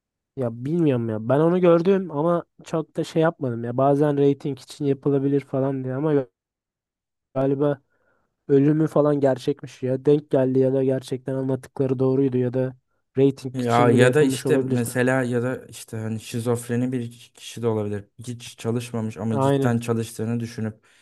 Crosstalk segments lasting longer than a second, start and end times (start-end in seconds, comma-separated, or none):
13.6-14.9